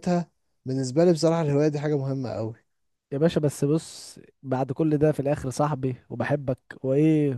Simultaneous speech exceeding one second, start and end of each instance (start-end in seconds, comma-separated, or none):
none